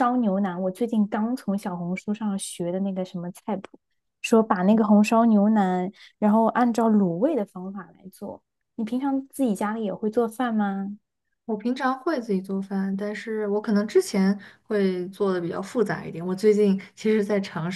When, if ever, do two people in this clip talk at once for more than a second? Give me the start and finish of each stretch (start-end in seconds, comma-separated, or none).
none